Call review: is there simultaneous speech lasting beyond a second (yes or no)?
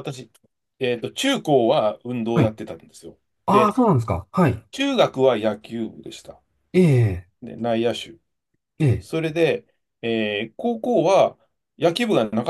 no